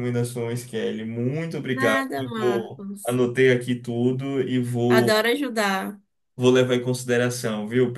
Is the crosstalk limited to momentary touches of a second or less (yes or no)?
no